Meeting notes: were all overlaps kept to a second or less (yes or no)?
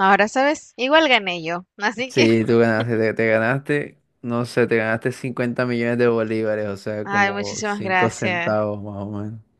no